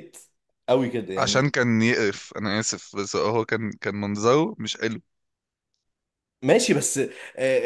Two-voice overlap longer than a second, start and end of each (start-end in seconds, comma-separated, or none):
none